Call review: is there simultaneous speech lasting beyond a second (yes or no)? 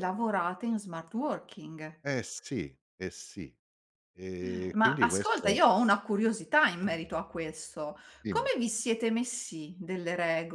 yes